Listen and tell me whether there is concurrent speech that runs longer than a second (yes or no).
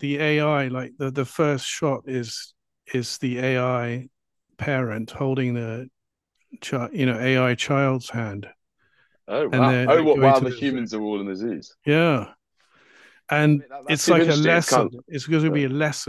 yes